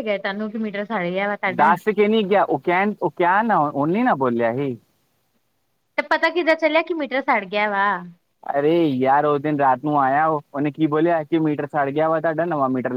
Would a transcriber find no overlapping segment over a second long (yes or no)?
yes